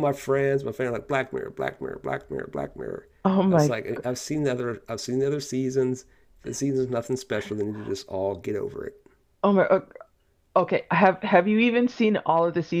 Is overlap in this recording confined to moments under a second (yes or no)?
yes